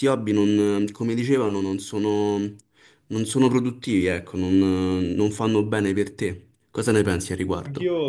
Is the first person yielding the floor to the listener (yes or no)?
yes